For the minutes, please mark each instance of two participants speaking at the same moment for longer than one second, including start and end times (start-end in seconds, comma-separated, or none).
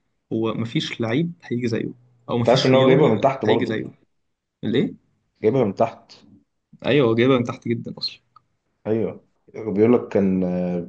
2.4-3.8